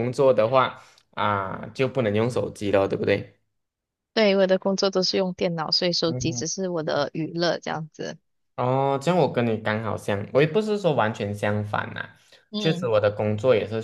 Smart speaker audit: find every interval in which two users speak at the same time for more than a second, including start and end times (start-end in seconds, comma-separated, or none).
none